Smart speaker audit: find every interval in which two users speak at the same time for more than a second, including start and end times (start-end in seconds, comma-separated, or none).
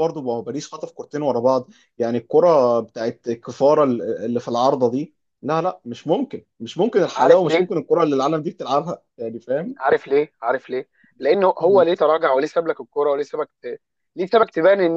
none